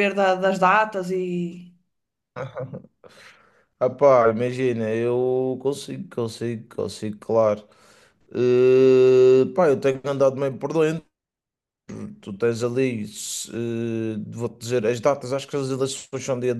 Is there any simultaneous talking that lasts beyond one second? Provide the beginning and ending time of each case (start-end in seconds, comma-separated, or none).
none